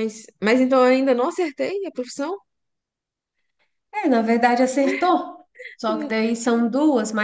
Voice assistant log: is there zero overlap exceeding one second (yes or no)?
yes